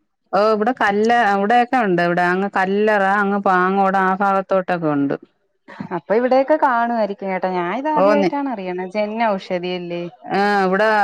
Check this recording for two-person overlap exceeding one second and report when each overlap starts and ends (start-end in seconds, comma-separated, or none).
none